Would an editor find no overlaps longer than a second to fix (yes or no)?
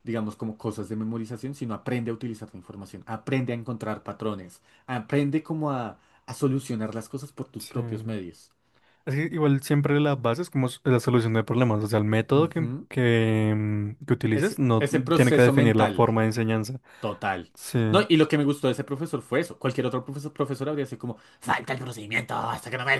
no